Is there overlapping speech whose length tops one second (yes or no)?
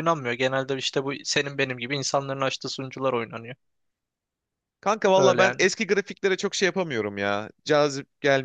no